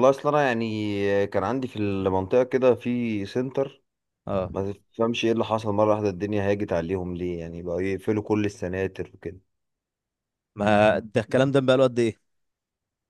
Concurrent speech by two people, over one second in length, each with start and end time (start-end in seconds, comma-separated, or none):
none